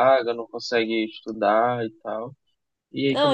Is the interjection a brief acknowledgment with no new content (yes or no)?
no